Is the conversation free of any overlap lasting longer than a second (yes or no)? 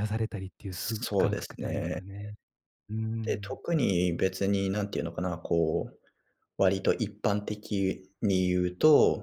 no